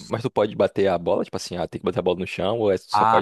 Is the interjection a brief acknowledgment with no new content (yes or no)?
no